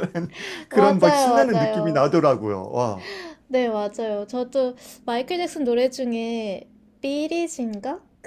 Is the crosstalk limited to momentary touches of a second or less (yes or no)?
no